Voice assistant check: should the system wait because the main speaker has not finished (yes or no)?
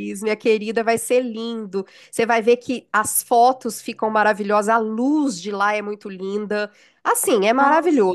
yes